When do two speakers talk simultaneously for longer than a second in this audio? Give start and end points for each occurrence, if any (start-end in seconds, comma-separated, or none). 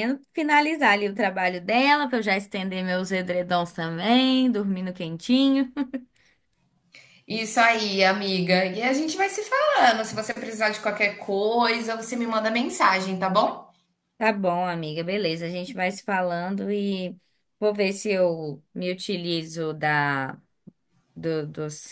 none